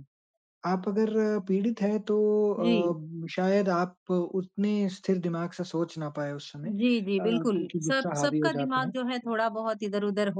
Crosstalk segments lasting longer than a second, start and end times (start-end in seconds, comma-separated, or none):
7.2-8.9